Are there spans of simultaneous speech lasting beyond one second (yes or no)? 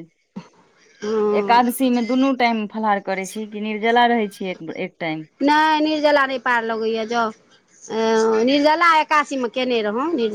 no